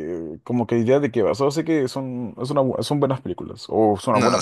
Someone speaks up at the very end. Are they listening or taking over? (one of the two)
taking over